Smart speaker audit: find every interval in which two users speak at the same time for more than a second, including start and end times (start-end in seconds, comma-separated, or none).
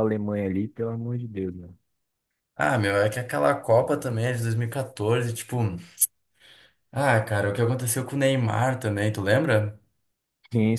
none